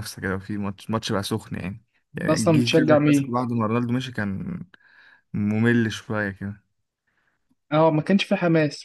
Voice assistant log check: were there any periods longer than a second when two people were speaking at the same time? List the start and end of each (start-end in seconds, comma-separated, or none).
2.1-3.4